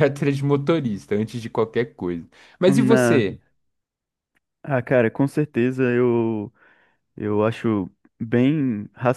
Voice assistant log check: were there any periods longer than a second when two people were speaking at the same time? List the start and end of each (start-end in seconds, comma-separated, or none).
none